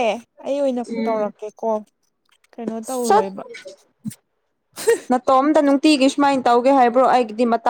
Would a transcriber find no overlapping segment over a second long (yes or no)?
yes